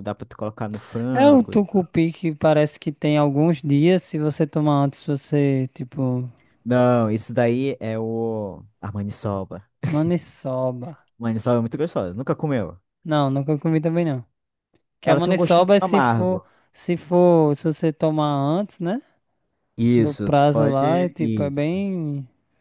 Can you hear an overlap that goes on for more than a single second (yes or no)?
yes